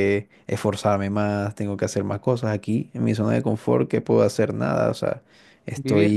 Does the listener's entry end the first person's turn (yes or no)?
no